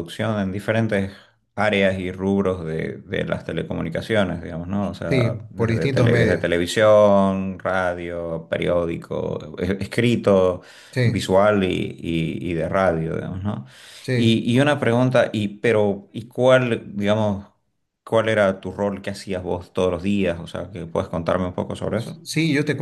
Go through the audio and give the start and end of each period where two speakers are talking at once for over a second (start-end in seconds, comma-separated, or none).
5.1-6.5